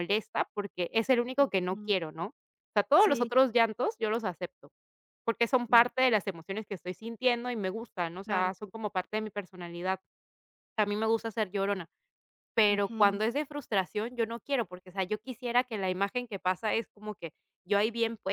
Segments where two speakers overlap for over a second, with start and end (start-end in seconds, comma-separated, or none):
none